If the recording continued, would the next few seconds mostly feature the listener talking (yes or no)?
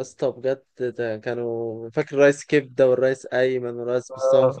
yes